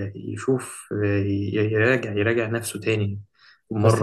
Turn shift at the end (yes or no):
yes